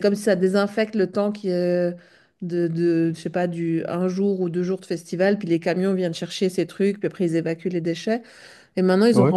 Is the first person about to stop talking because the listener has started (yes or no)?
no